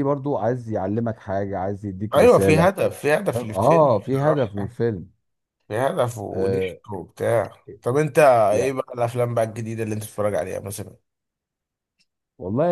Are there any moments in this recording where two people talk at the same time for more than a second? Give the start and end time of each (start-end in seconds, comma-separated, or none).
3.3-4.7